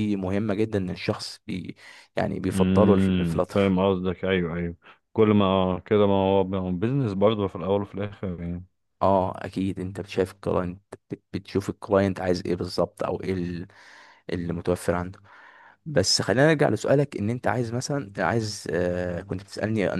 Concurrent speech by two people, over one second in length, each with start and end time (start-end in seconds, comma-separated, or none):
2.5-3.8